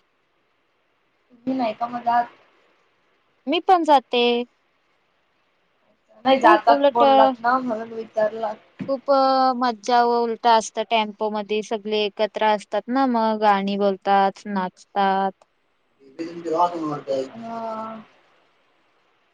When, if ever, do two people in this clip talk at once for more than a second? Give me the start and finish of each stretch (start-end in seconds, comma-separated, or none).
none